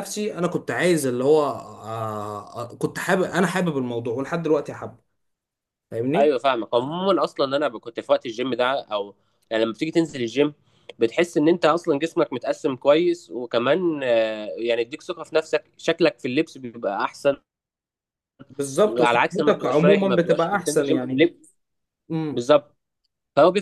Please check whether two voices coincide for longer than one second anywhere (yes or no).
yes